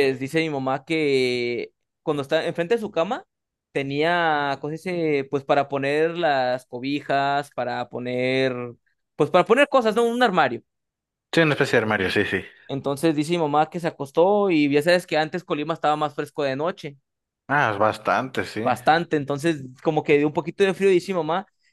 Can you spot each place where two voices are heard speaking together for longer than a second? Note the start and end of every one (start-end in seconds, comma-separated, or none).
none